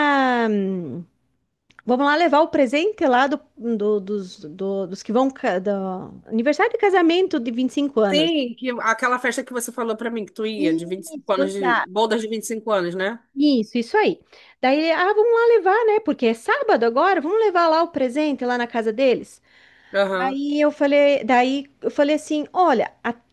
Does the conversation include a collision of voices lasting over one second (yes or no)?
yes